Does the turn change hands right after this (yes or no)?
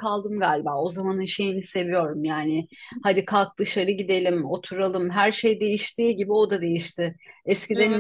no